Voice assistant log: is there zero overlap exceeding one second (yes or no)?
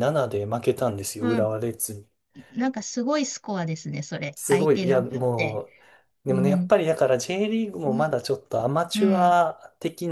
no